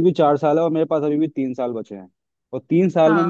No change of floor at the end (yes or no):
yes